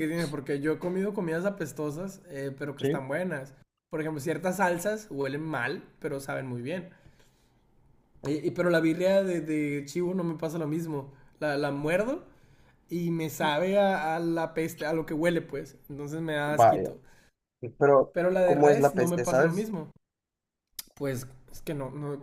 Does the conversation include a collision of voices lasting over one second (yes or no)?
yes